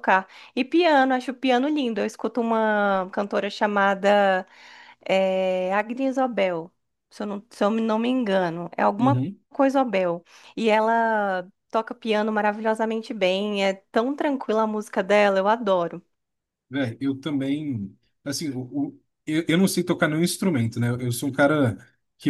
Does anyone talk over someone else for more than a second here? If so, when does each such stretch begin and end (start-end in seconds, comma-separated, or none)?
none